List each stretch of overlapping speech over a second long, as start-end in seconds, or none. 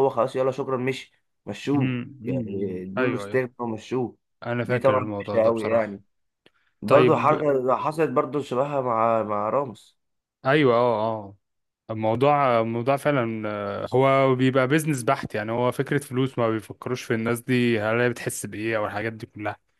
1.8-3.4, 4.6-6.0